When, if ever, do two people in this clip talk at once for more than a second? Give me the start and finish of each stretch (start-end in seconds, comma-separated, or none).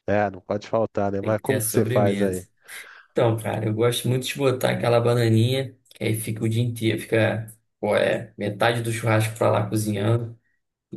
1.2-2.4